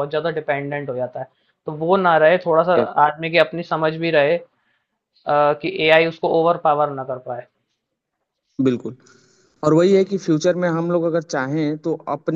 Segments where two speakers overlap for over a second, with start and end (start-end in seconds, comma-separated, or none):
none